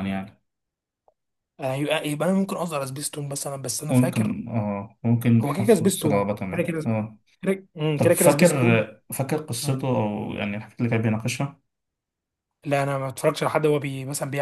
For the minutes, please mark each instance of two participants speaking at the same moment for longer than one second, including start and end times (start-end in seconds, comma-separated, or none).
5.4-6.8